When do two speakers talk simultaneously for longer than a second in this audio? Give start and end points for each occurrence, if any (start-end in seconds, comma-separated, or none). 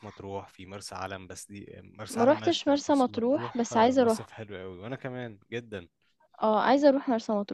2.1-4.3